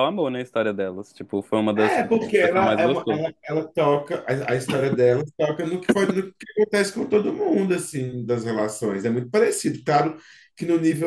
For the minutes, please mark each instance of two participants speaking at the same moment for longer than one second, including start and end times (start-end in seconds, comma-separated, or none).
1.7-3.2